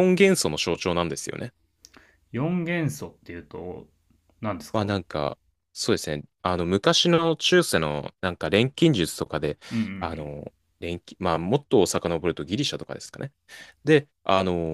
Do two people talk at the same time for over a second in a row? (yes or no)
no